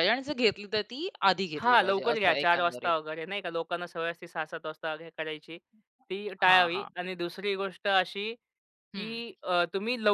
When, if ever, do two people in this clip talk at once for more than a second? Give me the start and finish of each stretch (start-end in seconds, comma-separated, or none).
1.6-2.9